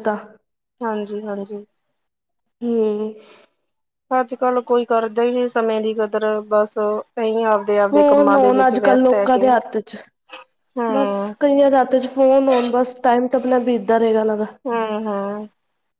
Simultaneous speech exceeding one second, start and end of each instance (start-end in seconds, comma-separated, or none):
none